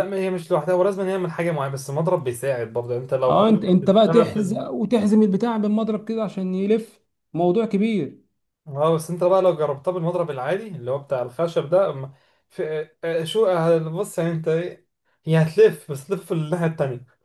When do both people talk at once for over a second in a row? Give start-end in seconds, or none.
3.3-4.6